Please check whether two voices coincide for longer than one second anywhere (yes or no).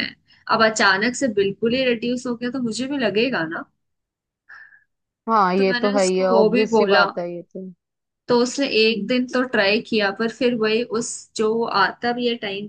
yes